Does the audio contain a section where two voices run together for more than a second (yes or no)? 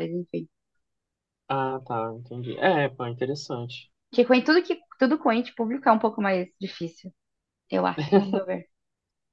no